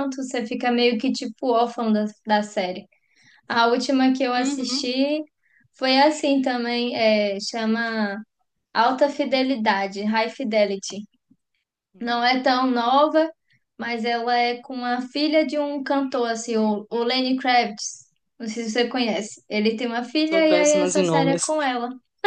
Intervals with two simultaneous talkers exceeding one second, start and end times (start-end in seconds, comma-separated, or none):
20.2-21.6